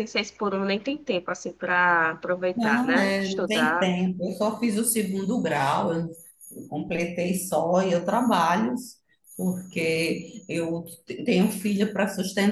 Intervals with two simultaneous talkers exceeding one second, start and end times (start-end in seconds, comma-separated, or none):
2.5-3.9